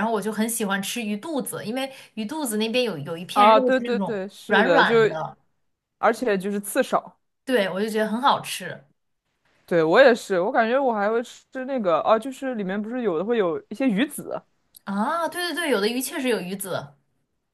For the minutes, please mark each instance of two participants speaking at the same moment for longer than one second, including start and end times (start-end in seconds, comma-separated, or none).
3.3-4.9